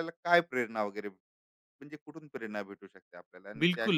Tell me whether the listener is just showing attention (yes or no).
no